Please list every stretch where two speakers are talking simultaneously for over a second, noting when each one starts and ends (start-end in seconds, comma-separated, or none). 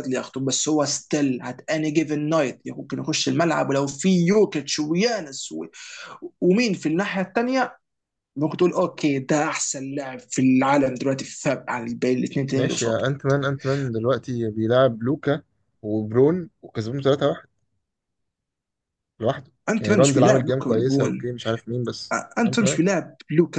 19.7-21.3